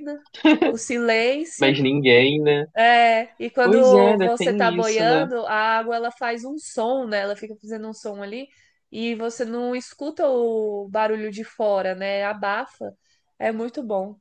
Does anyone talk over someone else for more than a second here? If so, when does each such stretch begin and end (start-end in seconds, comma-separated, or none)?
3.6-5.3